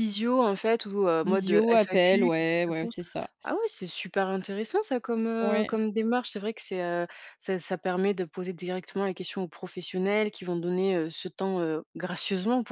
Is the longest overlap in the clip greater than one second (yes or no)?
yes